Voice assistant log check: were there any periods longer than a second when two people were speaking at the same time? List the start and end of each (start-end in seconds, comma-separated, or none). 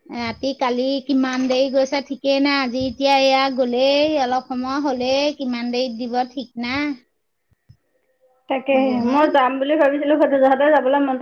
none